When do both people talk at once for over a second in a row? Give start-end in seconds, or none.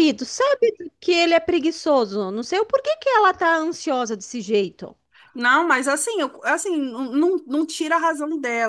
none